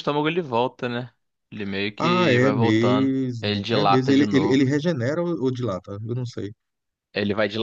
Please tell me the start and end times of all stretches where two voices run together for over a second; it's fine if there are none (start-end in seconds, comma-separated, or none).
2.0-4.6